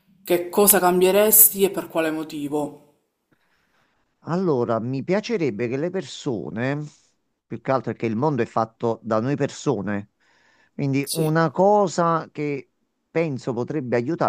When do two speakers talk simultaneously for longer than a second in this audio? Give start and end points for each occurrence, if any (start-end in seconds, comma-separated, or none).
none